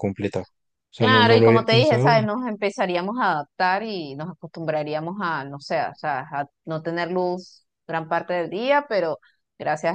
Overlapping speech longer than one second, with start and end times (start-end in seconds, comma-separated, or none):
1.0-2.3